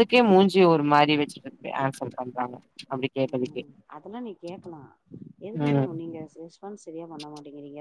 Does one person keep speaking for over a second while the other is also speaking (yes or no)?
no